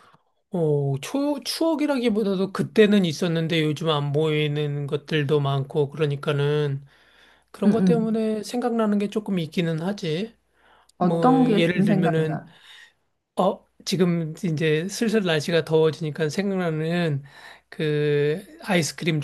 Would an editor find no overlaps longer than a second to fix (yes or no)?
no